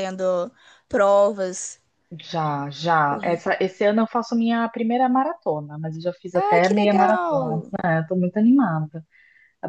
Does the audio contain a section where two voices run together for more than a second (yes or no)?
yes